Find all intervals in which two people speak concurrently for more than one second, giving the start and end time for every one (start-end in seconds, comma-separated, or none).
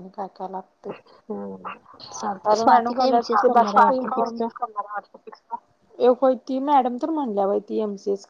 none